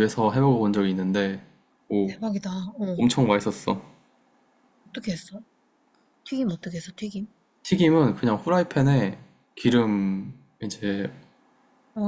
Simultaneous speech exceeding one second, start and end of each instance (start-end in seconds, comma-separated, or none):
none